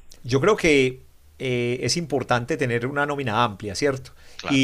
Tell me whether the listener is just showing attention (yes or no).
yes